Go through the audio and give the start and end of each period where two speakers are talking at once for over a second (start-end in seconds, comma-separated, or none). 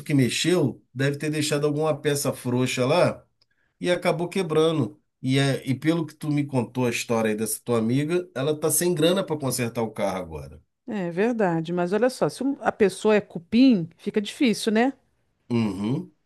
none